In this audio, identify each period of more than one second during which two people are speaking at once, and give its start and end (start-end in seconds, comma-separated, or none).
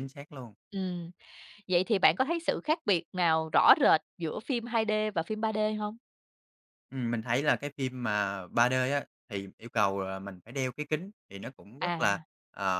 none